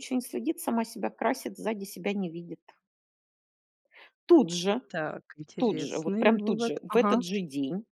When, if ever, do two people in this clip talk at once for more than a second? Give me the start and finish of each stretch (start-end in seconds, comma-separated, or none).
5.6-7.2